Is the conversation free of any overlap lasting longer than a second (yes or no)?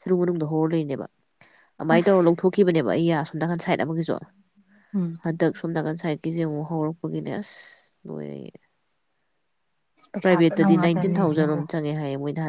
no